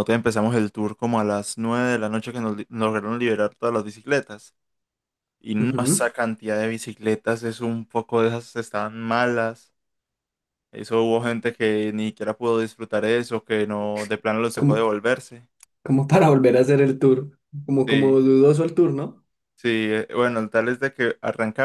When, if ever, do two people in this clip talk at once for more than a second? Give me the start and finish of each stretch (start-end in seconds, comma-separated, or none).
none